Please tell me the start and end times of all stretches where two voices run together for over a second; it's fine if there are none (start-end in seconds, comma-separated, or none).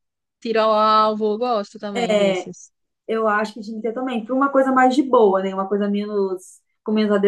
none